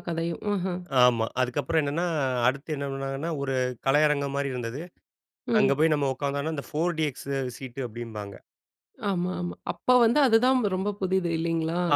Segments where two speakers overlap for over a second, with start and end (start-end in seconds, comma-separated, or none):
none